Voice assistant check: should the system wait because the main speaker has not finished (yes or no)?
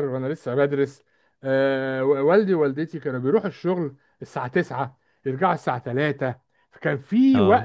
yes